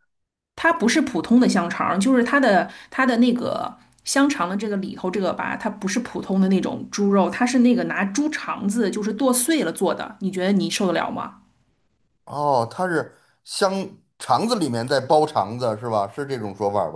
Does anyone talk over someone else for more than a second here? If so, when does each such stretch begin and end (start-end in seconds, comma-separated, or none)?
none